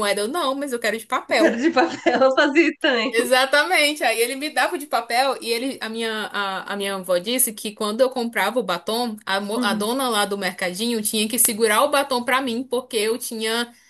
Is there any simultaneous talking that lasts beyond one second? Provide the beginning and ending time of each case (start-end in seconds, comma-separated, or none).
none